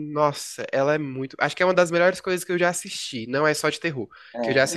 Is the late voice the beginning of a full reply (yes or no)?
no